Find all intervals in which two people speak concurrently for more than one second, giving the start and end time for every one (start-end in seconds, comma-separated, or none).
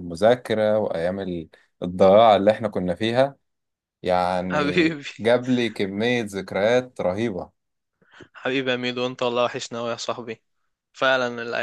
none